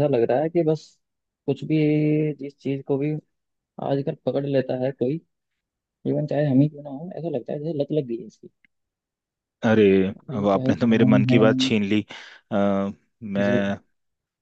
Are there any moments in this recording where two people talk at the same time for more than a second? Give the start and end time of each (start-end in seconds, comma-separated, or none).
10.2-11.4